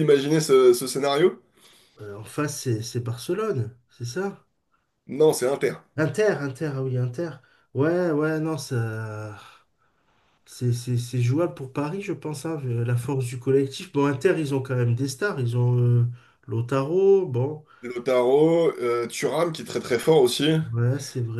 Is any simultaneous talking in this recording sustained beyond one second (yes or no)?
no